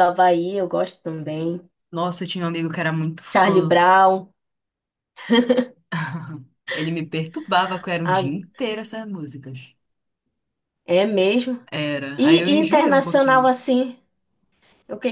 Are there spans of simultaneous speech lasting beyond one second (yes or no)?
yes